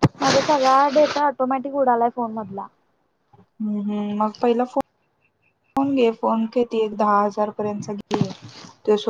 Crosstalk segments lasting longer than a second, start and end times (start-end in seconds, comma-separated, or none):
none